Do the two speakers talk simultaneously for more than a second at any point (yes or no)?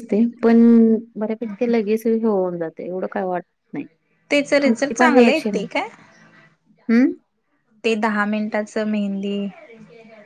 yes